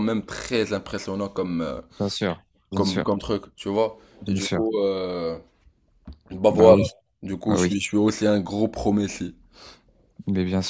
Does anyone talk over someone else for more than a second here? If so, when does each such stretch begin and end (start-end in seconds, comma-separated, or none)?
none